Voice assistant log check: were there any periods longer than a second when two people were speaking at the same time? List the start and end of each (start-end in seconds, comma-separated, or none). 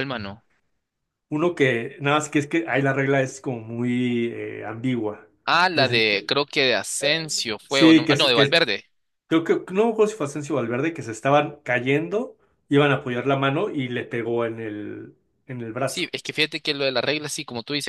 7.0-8.6